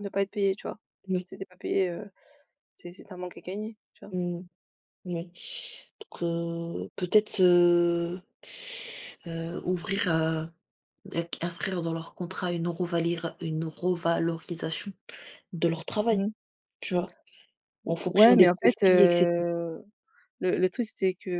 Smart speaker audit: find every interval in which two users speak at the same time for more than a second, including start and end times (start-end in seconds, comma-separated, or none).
17.9-19.4